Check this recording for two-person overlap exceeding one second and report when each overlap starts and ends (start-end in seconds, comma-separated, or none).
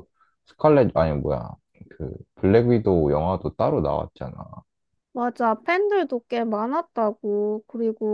none